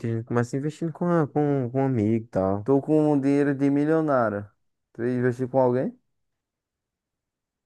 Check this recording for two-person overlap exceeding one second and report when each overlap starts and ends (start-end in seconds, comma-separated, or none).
none